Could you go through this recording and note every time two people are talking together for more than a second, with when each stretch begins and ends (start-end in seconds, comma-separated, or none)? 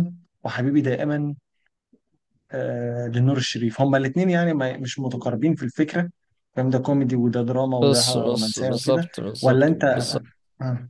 7.8-9.8